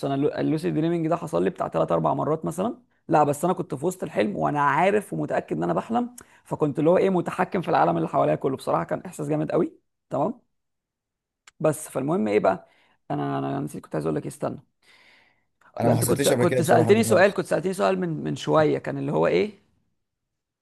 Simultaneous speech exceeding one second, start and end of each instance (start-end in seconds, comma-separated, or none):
15.8-17.3